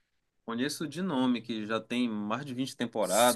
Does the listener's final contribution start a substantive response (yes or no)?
yes